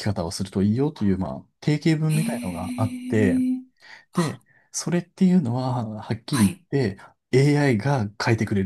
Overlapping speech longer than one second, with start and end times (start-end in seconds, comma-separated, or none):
2.1-3.4